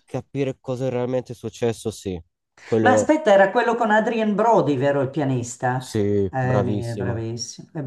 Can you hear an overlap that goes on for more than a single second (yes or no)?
yes